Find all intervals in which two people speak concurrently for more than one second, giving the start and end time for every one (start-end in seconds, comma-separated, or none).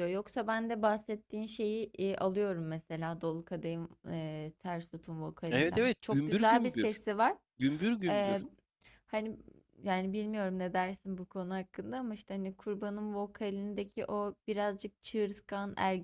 5.5-7.0